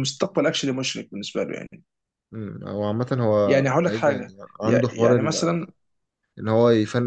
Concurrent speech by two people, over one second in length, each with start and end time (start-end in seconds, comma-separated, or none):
3.5-5.2